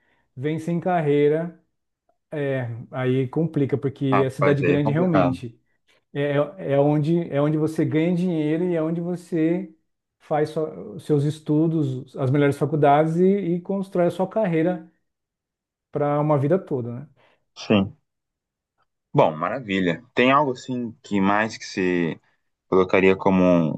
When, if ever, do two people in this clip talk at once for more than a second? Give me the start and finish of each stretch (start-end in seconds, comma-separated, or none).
4.1-5.4